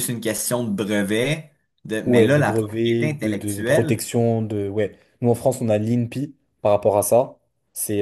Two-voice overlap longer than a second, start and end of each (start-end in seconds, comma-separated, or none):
2.0-4.0